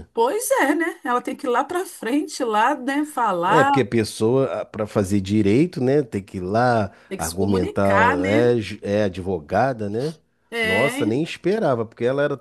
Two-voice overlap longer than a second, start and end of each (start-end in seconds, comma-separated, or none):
7.1-8.5